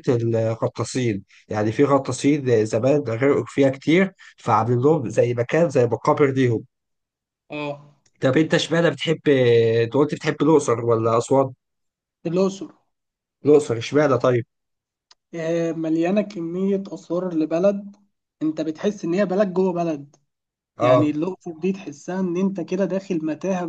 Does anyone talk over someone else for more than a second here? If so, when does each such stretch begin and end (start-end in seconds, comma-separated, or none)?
none